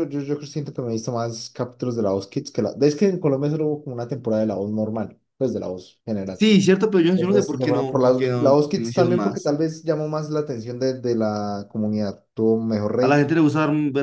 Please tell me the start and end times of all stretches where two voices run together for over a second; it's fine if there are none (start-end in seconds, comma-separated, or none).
7.2-9.5